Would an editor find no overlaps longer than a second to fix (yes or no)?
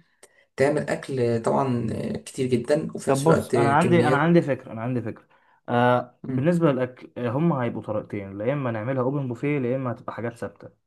no